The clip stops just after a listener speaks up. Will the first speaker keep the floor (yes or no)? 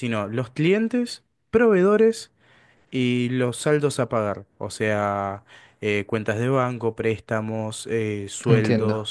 no